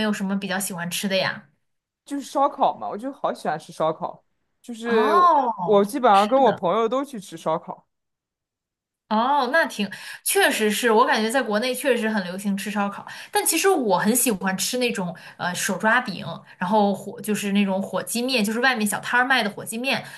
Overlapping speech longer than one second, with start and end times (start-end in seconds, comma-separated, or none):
4.8-6.6